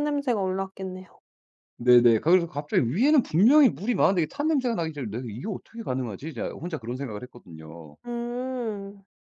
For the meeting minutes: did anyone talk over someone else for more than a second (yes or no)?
no